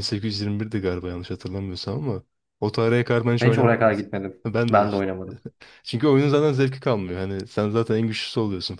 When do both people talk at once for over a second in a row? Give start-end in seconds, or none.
3.4-5.1